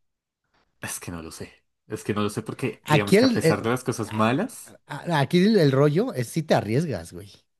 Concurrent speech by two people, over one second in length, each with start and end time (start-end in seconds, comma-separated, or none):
2.8-4.2